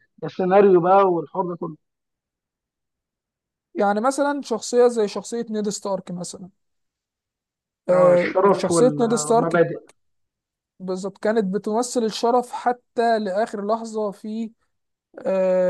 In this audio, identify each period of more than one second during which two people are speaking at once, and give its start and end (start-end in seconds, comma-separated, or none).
7.9-9.6